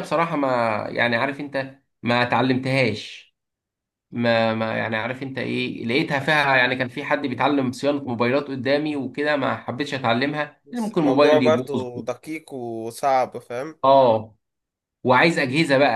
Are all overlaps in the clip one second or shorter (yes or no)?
no